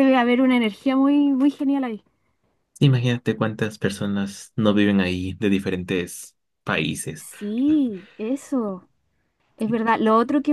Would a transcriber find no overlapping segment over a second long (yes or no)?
yes